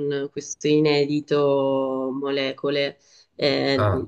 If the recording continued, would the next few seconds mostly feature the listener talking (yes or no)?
no